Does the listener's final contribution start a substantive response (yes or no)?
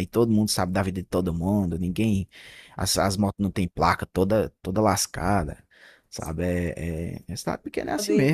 yes